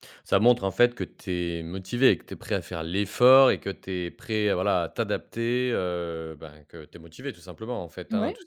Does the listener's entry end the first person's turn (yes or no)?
no